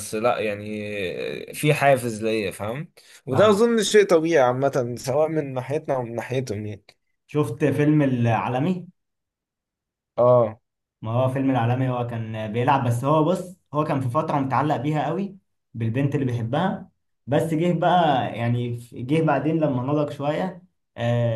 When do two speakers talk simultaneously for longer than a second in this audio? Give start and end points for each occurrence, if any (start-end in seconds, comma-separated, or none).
none